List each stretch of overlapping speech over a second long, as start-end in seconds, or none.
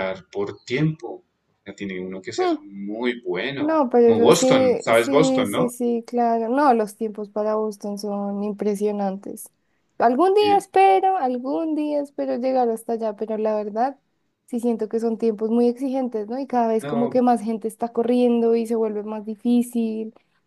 3.6-5.7